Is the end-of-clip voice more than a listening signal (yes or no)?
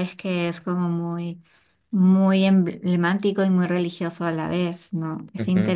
yes